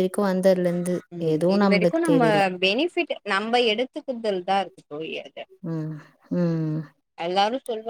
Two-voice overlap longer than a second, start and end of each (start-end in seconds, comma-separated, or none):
none